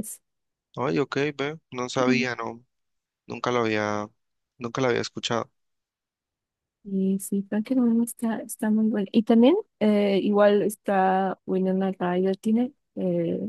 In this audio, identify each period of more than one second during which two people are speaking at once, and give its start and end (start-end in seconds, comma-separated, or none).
none